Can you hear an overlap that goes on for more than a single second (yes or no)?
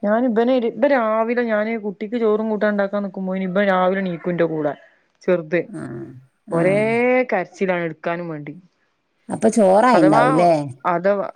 no